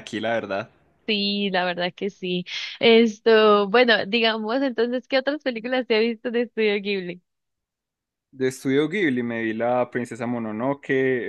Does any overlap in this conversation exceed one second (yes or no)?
no